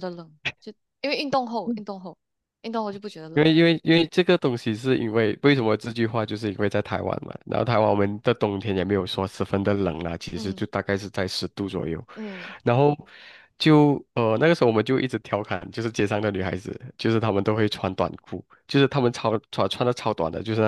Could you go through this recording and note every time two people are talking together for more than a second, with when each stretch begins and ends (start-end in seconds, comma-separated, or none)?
none